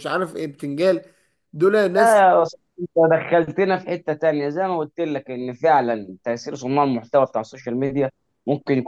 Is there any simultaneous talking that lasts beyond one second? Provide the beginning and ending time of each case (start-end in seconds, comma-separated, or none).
none